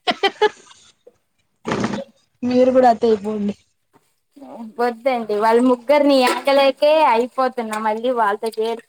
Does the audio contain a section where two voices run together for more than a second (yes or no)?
no